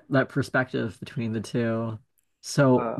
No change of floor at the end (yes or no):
yes